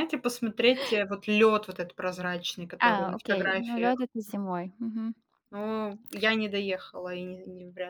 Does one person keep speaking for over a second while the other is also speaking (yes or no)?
yes